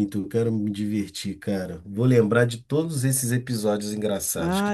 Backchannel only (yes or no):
no